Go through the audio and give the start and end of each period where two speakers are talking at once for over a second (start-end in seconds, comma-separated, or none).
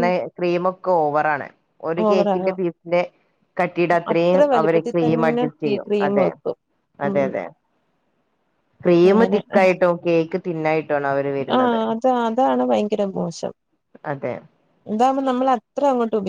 4.1-6.3